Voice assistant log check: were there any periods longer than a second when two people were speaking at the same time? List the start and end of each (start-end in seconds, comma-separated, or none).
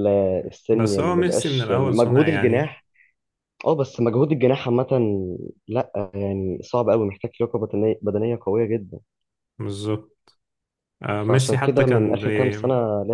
0.7-2.7, 11.3-12.6